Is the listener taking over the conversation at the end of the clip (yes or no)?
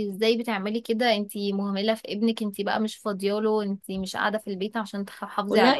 yes